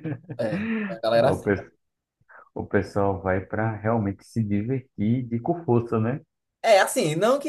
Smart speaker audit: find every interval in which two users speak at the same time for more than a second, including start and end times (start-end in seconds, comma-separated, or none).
none